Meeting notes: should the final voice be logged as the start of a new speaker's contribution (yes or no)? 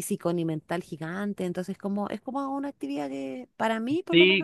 yes